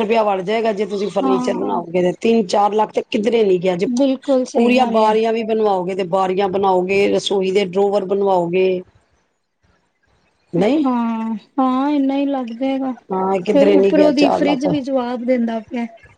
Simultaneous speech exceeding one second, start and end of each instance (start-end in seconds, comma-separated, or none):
13.1-14.7